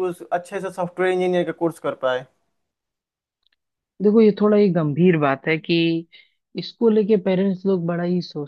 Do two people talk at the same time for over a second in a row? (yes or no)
no